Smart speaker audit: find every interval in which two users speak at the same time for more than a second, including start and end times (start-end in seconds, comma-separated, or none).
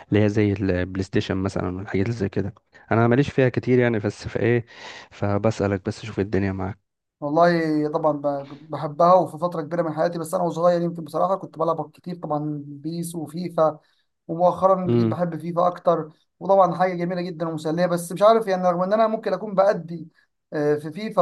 none